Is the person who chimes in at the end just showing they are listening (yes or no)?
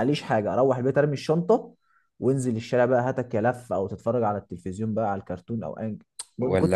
no